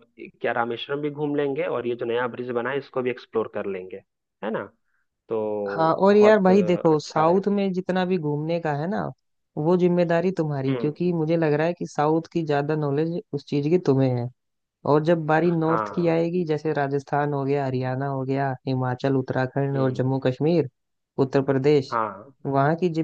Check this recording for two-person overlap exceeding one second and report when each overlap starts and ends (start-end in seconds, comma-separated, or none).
6.1-7.4